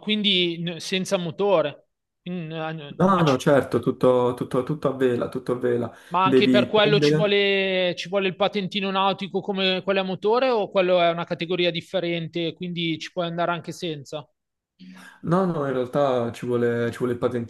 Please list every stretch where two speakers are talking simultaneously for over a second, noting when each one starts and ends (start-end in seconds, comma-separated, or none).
6.1-7.3